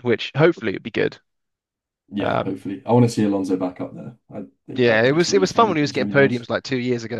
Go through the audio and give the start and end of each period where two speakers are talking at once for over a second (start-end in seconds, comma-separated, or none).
4.7-6.5